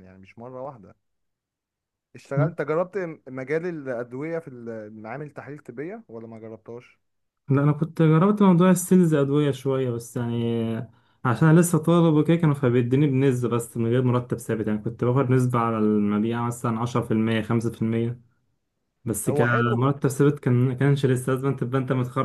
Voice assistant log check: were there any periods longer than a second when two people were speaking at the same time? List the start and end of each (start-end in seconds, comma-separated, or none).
none